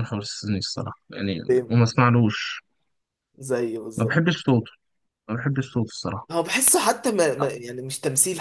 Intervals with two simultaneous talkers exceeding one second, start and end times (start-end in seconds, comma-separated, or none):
none